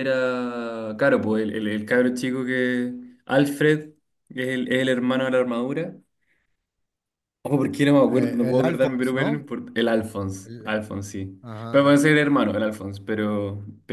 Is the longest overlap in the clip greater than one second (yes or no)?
yes